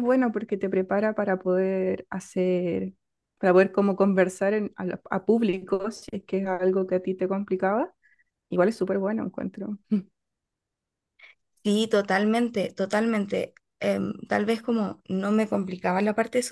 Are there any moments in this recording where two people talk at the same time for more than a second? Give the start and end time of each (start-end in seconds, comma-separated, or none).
none